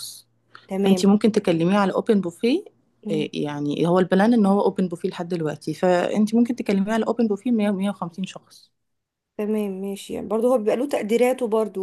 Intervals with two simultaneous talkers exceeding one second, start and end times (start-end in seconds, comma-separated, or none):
none